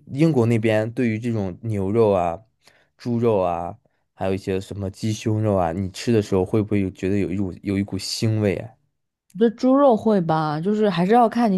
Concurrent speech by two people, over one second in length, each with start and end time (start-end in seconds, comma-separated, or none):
none